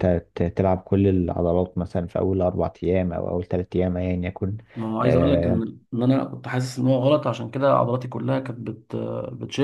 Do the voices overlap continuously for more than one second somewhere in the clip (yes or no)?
no